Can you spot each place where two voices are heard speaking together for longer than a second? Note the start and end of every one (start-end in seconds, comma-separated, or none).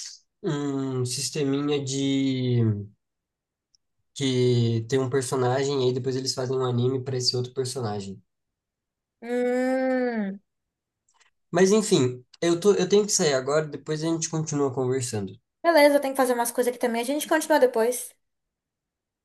none